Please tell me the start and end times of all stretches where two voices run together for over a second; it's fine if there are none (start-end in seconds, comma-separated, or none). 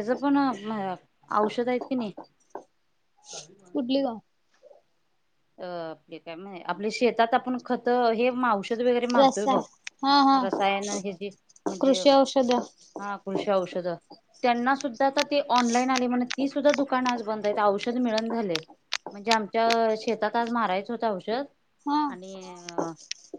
none